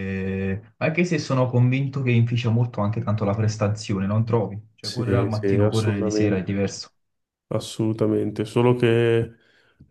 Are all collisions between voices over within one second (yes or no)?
no